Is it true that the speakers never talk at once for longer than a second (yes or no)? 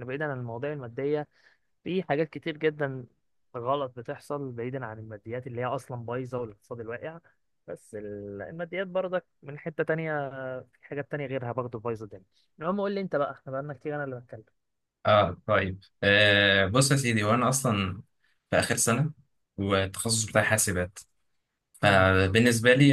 yes